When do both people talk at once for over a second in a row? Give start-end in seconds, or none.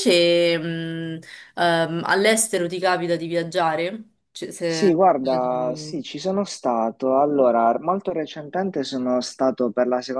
none